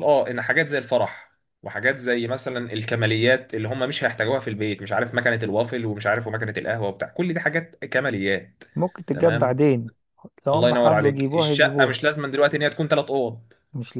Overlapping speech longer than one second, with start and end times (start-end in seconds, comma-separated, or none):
10.5-12.0